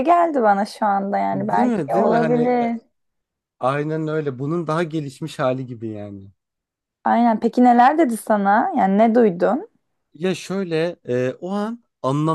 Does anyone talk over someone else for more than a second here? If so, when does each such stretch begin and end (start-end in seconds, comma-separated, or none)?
1.3-2.7